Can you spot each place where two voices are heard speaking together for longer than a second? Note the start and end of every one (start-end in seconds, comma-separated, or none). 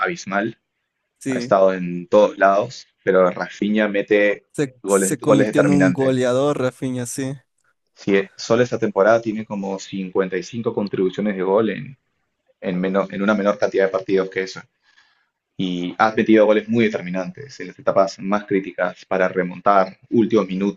4.8-6.3